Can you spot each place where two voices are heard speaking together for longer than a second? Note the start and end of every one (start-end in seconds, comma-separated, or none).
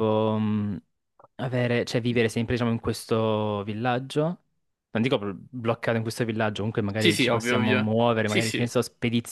7.0-8.8